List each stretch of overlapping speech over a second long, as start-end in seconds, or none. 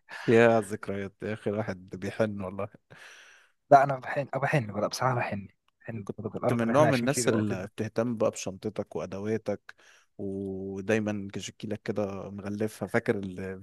6.0-7.7